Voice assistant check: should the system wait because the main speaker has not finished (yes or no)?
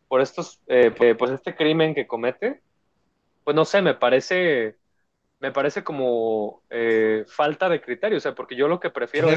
yes